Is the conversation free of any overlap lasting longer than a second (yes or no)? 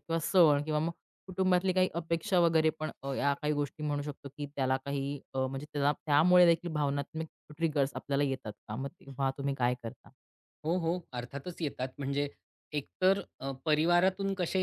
yes